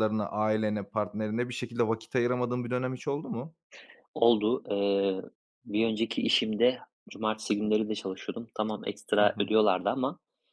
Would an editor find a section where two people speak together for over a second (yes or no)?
no